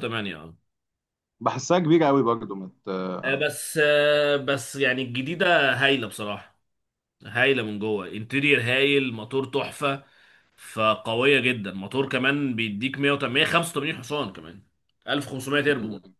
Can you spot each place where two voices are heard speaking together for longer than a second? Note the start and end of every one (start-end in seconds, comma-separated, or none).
none